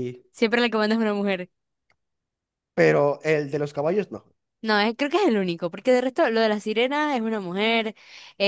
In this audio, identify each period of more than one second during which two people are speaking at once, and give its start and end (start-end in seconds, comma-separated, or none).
none